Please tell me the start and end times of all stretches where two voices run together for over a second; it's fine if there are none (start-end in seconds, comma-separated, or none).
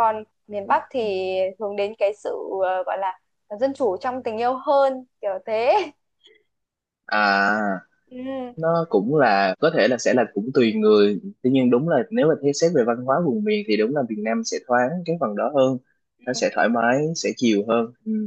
none